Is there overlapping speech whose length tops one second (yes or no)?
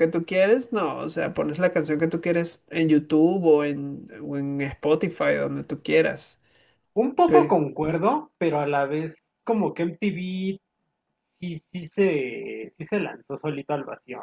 no